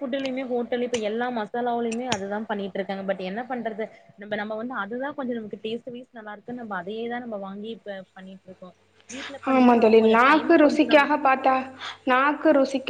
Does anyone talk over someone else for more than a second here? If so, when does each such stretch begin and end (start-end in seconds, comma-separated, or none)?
9.5-11.2